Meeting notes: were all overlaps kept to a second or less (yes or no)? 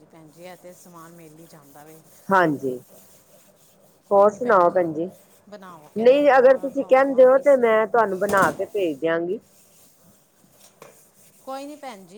no